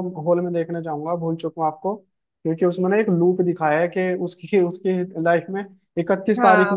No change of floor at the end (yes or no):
no